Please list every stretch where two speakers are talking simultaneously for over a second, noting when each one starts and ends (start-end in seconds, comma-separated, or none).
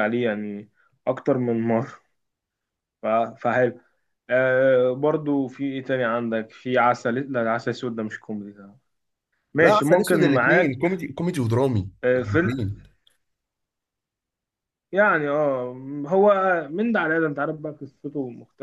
9.6-11.0